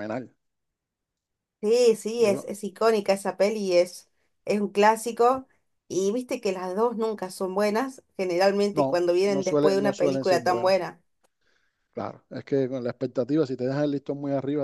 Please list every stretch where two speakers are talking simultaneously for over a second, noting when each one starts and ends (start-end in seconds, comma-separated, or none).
8.7-10.8